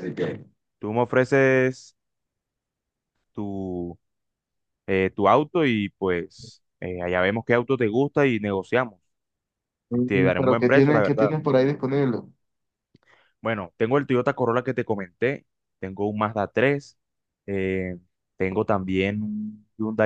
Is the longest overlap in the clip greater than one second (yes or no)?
yes